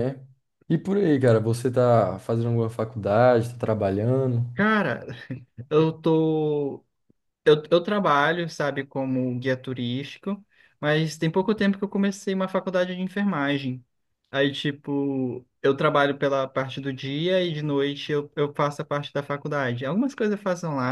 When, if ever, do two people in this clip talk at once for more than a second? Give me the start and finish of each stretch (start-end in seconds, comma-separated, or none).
none